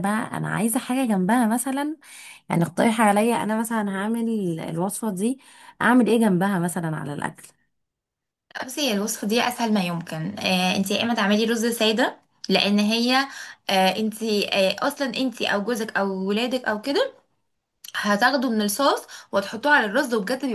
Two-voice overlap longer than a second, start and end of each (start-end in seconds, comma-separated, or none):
none